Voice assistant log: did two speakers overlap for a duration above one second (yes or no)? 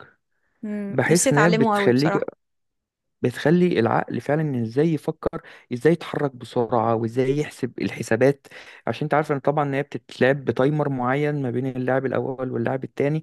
yes